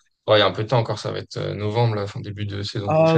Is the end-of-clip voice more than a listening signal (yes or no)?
yes